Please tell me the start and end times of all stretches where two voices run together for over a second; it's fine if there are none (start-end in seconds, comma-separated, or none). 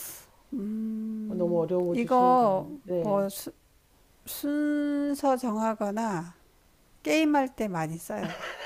1.9-3.3